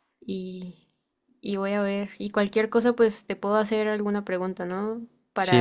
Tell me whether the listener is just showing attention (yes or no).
no